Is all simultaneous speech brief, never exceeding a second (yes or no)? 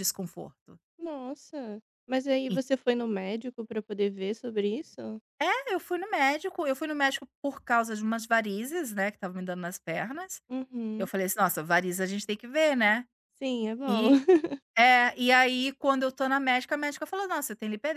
yes